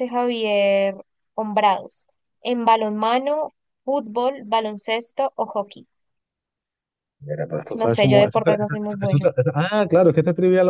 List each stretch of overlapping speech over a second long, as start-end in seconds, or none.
7.5-9.3